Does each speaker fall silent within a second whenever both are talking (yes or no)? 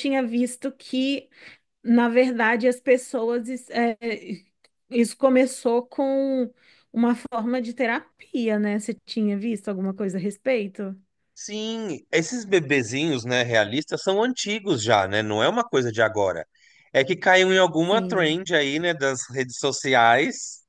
yes